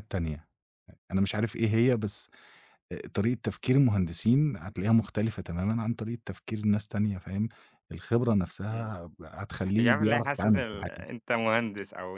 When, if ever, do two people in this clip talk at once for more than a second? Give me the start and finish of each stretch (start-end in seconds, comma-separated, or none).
9.8-11.1